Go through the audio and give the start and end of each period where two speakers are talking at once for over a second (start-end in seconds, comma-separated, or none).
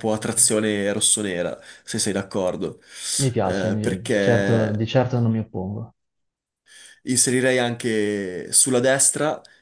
3.4-4.8